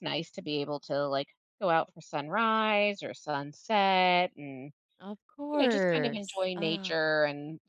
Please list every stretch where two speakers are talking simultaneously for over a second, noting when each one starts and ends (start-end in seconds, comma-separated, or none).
5.5-7.1